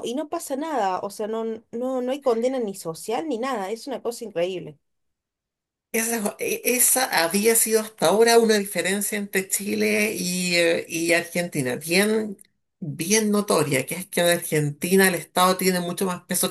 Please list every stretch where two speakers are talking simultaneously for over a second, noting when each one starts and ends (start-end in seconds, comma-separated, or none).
none